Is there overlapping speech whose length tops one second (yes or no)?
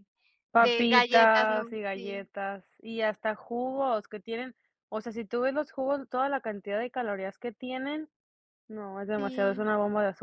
yes